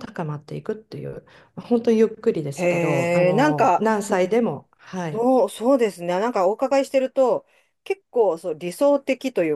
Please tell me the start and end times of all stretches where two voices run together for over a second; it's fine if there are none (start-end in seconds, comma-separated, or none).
2.6-3.8